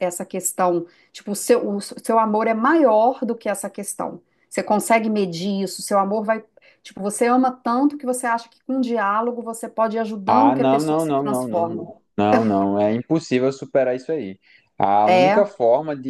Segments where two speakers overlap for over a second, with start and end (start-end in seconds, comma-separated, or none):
10.3-11.8